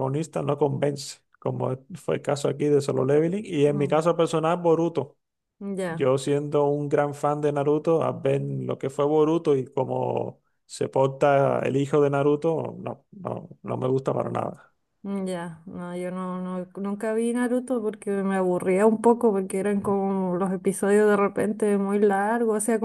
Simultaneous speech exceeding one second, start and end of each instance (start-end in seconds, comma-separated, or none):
none